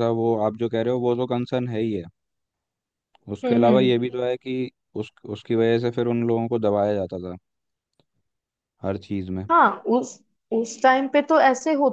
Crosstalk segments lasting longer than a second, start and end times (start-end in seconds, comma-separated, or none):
none